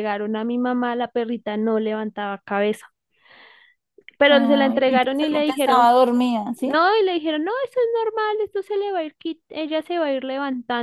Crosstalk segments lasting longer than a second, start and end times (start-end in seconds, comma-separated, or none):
4.3-5.9